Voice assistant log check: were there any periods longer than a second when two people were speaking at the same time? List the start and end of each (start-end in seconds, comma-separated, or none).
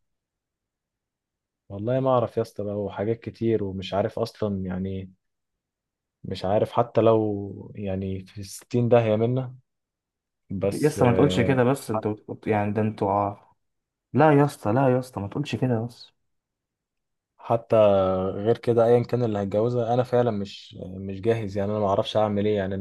10.7-12.0